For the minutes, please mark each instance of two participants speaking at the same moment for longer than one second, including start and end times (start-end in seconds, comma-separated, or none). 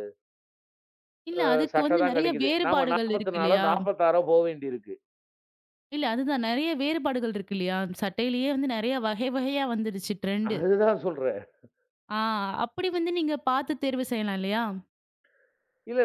1.7-3.7